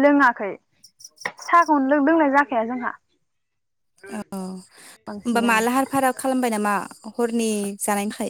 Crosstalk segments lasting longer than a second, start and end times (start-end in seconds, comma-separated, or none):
none